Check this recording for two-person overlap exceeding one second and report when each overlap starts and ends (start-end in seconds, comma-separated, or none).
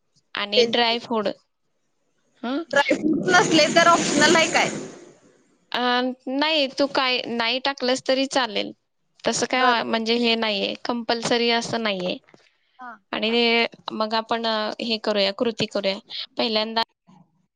none